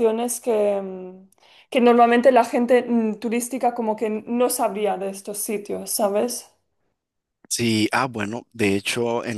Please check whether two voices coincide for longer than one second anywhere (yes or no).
no